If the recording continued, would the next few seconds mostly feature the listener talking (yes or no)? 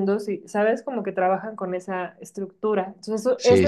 yes